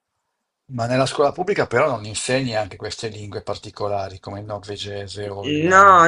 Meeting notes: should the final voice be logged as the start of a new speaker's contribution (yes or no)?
yes